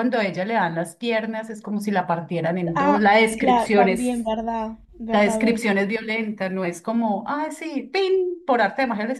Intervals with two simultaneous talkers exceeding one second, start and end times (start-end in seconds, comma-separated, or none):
2.8-4.3